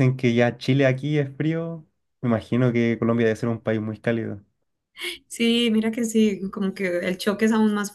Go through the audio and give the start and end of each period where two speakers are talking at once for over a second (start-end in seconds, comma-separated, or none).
none